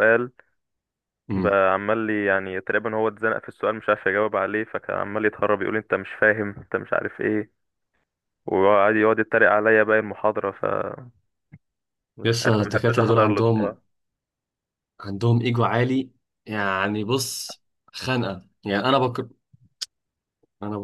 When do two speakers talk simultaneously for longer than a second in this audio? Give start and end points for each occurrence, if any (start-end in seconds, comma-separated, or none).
12.4-13.8